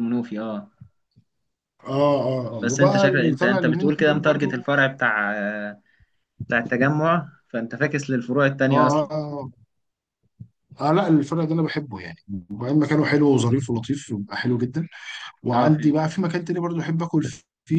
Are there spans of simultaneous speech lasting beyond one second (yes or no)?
yes